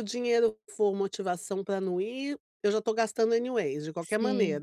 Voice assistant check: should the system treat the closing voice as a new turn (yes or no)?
yes